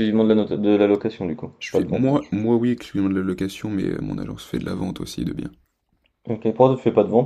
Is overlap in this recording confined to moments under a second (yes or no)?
yes